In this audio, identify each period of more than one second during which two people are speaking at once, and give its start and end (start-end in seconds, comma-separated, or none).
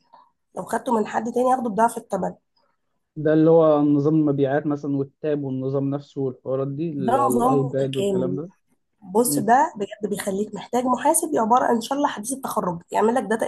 7.0-8.4